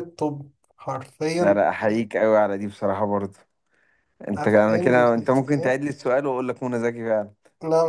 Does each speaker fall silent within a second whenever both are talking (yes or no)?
no